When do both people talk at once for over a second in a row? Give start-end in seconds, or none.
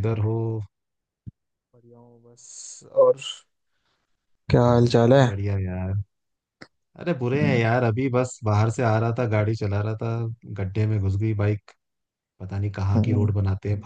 none